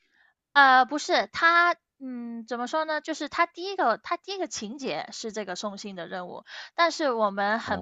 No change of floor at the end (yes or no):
yes